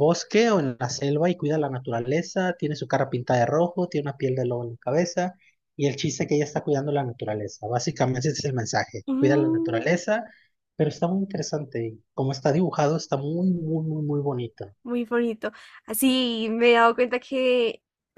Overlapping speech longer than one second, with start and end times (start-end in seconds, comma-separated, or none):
none